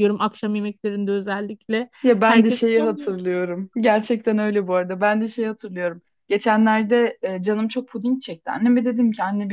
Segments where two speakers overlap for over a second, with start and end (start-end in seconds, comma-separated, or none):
none